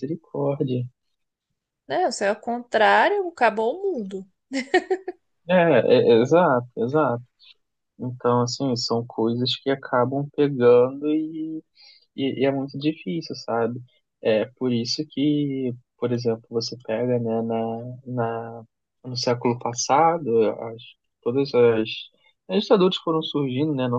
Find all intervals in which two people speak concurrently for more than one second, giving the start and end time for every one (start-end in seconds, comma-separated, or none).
none